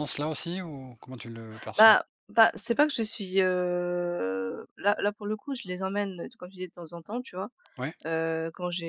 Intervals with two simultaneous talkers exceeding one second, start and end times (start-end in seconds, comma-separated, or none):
none